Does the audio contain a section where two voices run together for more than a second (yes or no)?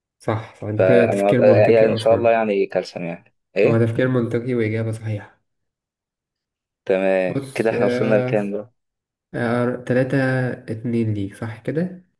yes